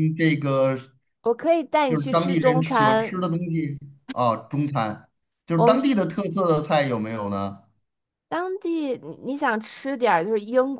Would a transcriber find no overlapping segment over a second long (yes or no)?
no